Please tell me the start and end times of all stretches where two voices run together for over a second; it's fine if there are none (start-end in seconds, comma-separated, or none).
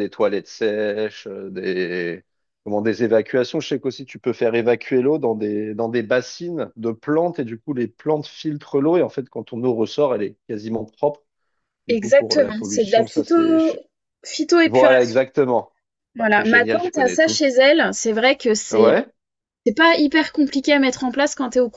11.9-13.8, 16.2-17.4